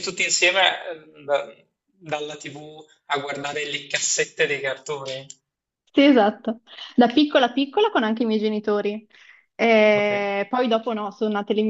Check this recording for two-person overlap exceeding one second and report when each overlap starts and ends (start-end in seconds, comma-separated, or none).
none